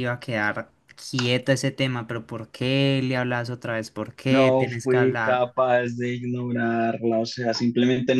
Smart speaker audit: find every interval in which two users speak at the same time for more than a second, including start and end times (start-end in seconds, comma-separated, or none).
4.2-5.5